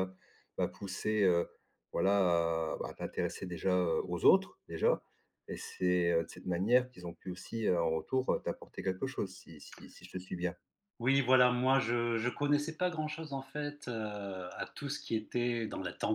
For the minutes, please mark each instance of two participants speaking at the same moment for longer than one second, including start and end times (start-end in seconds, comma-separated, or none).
none